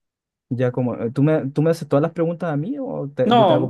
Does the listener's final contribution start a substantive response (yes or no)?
yes